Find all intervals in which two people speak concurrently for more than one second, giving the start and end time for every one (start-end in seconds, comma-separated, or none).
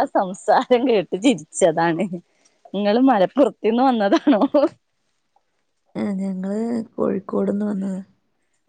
none